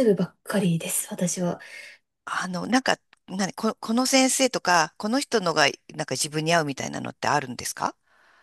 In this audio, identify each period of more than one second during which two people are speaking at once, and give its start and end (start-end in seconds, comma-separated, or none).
none